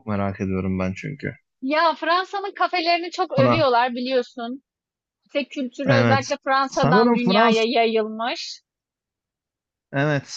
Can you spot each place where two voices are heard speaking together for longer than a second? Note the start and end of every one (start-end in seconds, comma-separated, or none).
5.9-7.6